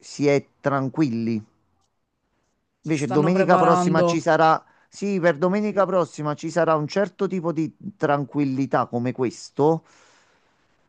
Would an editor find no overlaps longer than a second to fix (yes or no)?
no